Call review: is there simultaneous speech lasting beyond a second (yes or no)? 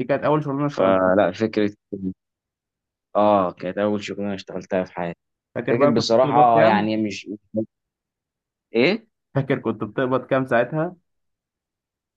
yes